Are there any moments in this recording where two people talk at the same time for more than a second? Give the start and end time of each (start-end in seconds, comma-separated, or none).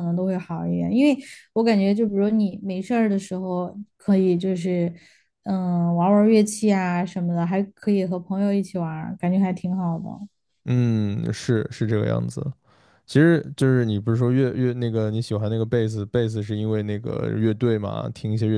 none